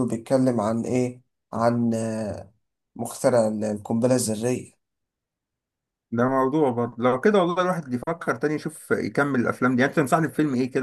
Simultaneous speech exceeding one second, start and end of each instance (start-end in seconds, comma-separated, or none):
none